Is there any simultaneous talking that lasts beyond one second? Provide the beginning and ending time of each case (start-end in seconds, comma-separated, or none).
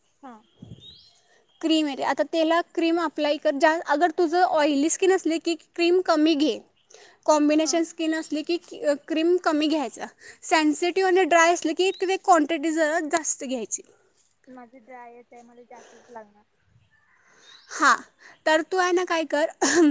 none